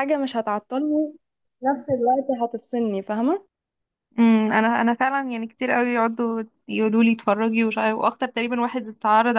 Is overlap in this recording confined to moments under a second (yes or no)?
yes